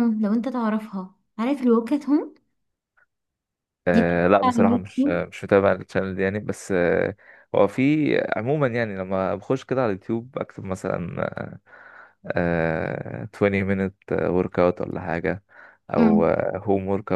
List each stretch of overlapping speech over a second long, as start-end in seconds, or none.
3.9-5.2